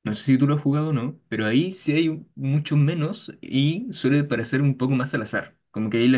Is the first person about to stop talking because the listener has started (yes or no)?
no